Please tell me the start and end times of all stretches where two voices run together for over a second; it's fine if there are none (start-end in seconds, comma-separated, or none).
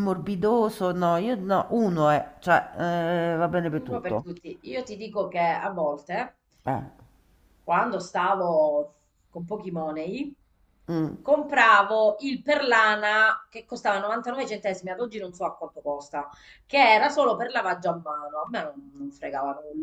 none